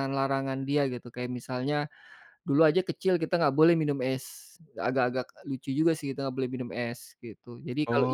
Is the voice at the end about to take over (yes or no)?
yes